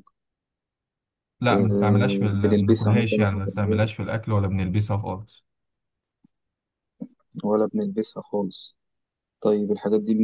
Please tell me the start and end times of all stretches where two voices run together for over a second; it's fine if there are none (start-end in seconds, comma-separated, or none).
1.5-3.8